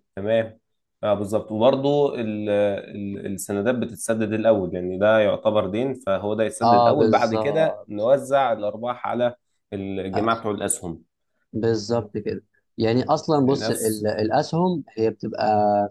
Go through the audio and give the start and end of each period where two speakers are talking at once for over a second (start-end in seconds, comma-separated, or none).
6.6-8.1